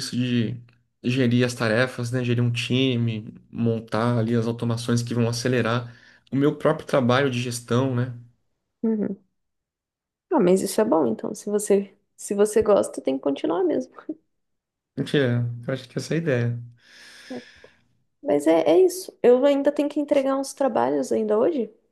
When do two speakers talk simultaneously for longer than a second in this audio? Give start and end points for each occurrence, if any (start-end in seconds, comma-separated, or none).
none